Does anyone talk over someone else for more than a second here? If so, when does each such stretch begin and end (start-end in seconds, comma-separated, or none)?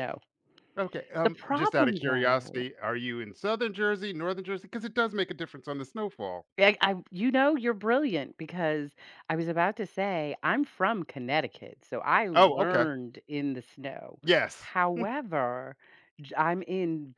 1.2-2.7